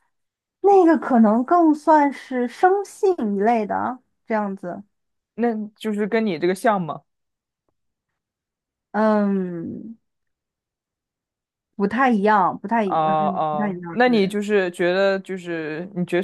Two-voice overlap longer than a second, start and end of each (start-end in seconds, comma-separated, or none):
12.8-14.3